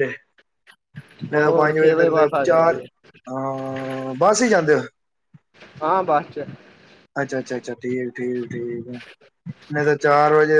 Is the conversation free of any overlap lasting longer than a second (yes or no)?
no